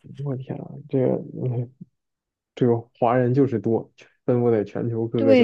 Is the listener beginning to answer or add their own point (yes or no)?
yes